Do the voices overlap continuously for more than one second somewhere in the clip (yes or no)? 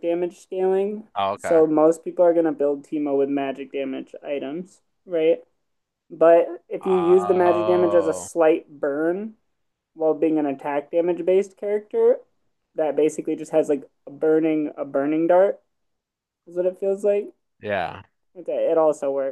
yes